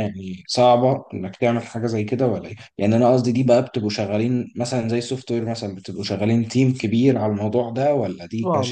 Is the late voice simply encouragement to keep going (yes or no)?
no